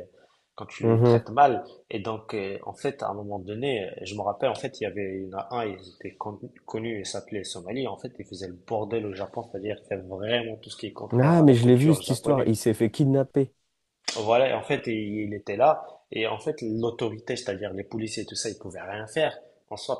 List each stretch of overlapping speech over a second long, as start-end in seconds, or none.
11.1-12.5